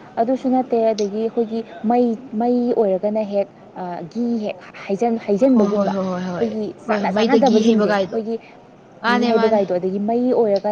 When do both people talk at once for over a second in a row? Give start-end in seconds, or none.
5.5-8.2